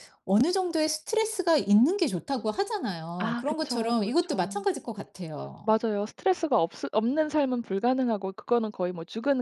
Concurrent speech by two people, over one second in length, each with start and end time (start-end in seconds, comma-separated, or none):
3.2-4.6